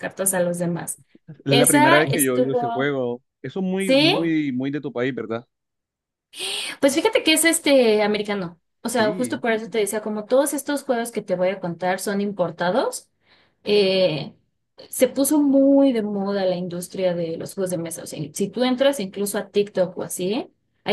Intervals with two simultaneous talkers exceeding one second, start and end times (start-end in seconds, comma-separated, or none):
1.5-2.9